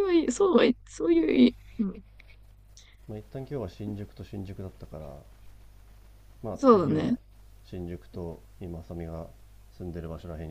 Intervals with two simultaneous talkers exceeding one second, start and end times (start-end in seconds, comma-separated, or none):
none